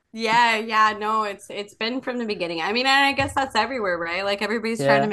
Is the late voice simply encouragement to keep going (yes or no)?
yes